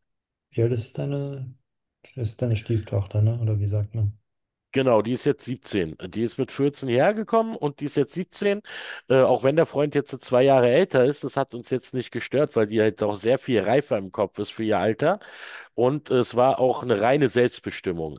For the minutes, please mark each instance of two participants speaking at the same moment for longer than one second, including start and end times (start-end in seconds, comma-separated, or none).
none